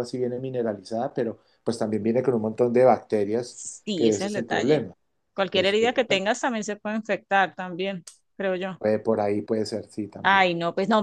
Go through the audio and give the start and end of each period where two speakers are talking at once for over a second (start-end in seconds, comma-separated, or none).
3.4-4.9